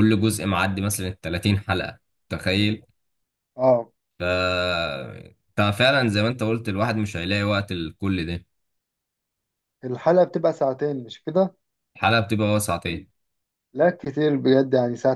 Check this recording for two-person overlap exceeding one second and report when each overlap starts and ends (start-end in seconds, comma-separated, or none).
none